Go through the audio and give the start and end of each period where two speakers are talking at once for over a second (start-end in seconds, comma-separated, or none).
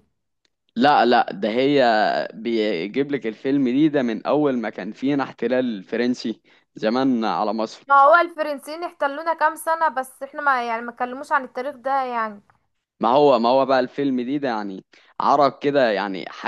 none